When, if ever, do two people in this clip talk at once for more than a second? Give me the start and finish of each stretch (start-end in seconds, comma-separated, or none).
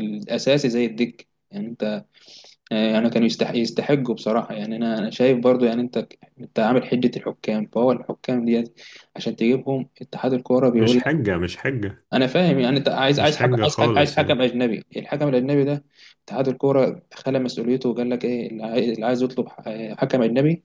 13.2-14.4